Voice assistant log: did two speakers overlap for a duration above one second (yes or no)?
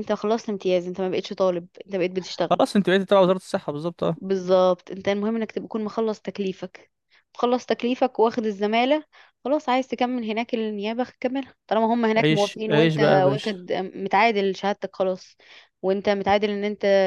yes